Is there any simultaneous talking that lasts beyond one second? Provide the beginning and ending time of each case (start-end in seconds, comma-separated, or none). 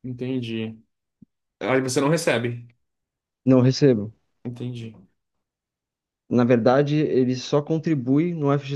none